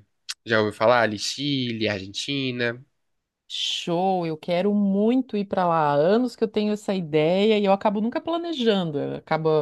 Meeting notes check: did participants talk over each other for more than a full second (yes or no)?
no